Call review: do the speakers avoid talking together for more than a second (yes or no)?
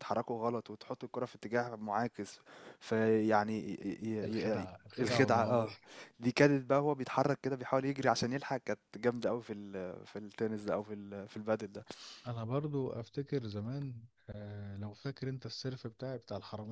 no